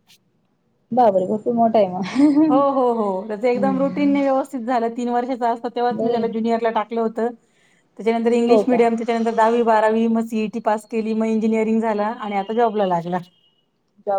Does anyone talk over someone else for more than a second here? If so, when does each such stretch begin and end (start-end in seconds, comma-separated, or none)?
none